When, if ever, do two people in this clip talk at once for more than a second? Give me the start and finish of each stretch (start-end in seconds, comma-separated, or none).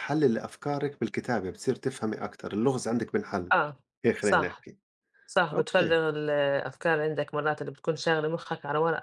none